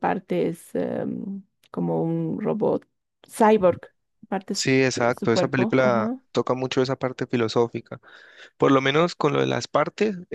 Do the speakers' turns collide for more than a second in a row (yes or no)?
yes